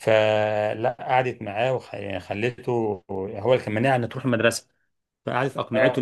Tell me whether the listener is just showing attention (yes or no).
yes